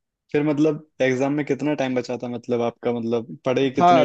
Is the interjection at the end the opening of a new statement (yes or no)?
yes